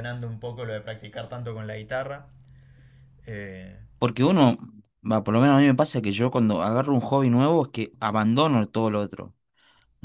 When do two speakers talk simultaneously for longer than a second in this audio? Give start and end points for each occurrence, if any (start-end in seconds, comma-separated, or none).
none